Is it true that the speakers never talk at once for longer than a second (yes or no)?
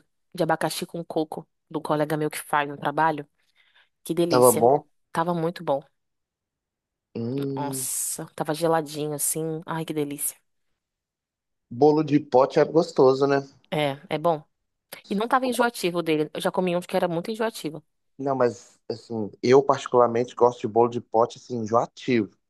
yes